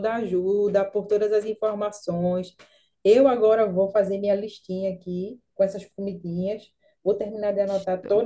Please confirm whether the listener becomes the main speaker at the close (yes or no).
no